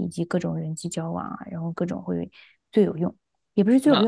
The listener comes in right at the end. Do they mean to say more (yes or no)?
no